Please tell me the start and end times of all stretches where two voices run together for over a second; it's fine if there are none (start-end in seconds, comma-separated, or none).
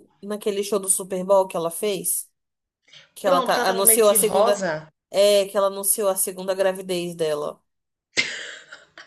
3.2-4.6